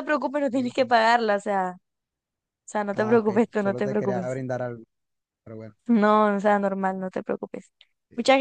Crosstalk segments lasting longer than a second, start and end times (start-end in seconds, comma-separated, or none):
3.0-4.4